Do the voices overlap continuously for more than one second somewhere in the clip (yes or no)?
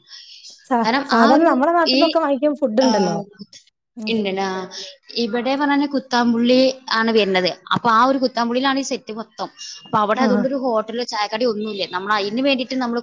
no